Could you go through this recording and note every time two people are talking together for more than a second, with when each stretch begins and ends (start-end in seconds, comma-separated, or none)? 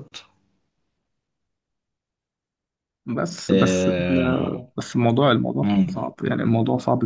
3.5-4.7